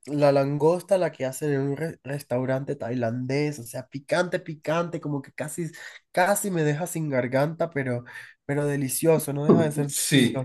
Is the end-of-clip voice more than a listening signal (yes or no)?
yes